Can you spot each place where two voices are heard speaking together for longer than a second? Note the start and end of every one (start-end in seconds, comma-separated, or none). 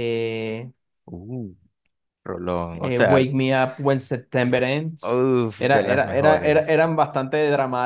5.0-6.7